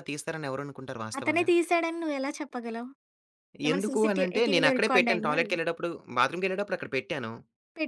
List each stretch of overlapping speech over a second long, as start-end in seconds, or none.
3.7-5.5